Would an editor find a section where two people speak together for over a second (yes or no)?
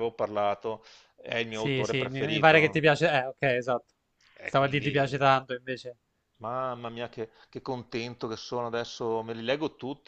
yes